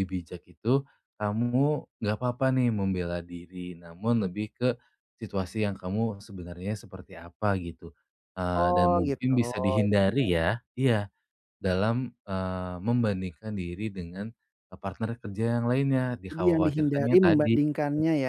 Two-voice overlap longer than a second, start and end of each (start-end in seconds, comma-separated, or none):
8.6-10.3, 16.3-17.6